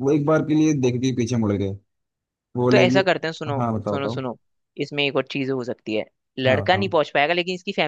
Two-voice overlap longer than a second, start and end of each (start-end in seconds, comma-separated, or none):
2.7-4.2